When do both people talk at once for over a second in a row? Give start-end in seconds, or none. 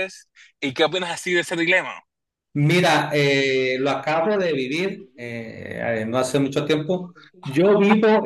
none